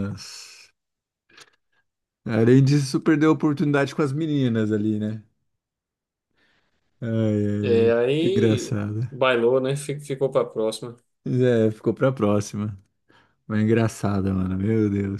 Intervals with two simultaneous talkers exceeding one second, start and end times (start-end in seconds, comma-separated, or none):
7.6-9.0